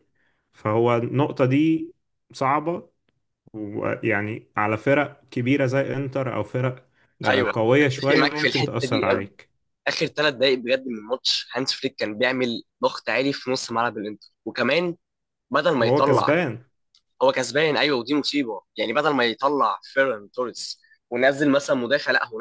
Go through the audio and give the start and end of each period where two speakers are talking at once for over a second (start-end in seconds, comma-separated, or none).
7.3-9.3